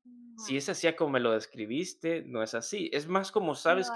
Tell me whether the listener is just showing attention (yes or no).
yes